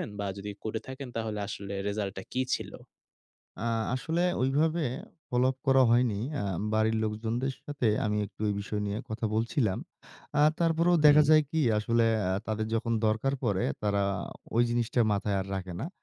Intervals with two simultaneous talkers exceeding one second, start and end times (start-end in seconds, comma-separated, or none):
none